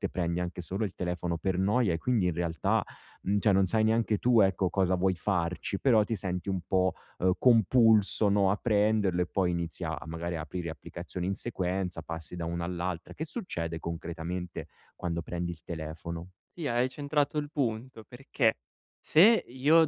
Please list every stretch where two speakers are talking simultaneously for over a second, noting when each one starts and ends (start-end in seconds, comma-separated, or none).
none